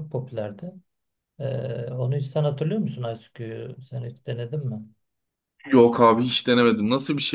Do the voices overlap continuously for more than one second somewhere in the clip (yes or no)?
no